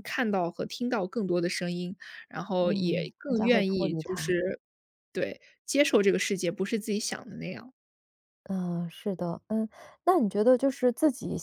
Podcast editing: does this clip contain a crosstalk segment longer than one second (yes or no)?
yes